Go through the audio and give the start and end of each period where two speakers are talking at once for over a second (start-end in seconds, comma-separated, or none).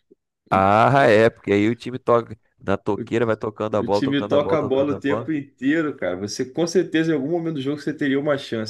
3.8-5.3